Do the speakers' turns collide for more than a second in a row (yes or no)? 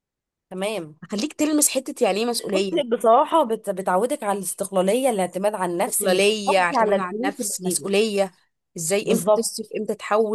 yes